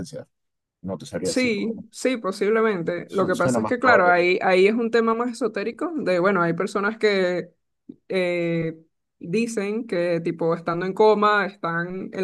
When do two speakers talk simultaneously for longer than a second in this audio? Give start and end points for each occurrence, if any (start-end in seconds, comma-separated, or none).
3.1-4.3